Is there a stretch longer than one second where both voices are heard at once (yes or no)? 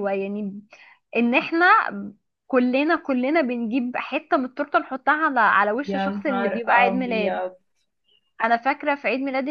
yes